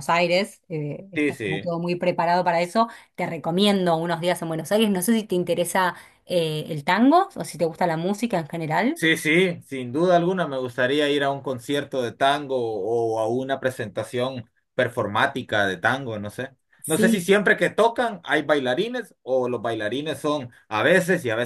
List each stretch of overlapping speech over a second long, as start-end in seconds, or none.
none